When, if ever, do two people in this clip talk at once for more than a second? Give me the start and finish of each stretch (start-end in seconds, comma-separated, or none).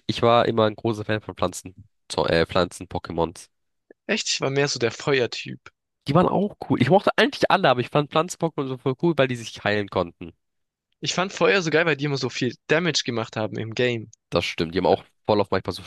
none